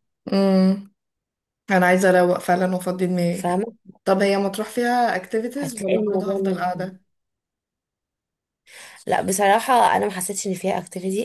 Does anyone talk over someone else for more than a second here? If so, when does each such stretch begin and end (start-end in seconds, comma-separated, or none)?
5.6-6.9